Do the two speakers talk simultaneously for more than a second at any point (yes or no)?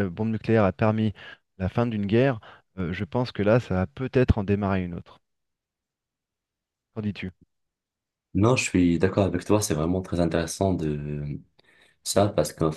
no